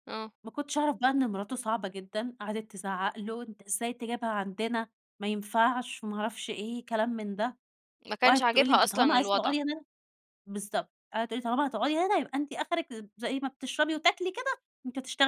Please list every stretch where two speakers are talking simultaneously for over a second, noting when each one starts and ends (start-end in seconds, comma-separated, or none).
8.2-9.5